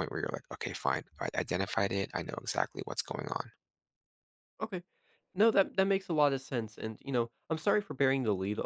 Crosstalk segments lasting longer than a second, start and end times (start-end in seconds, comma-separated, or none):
none